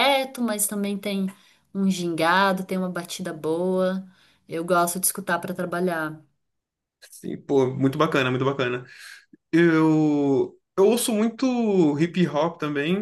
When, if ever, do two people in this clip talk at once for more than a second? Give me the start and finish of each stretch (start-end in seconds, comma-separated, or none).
none